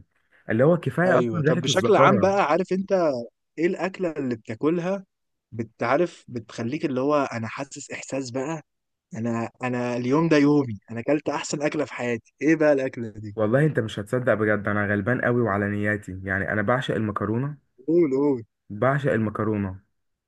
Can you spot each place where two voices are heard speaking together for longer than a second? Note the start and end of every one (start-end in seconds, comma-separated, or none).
1.1-2.3